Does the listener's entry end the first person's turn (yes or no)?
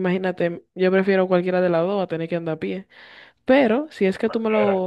no